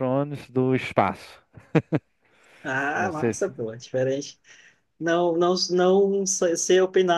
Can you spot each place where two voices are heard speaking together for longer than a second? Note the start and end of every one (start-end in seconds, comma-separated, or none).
none